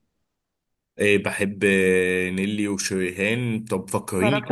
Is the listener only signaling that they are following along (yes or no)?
yes